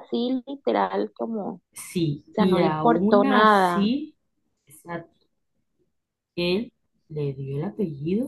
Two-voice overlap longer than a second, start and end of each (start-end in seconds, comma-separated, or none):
2.3-3.9